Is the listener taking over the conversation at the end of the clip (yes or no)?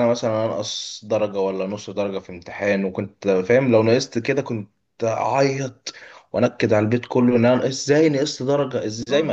yes